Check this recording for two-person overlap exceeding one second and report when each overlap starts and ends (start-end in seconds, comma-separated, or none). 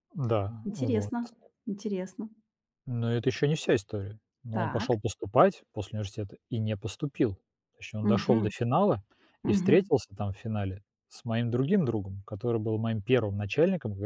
none